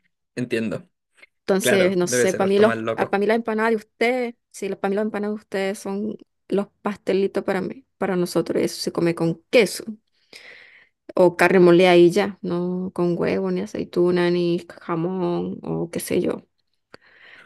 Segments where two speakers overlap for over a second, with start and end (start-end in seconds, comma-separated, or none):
1.6-3.1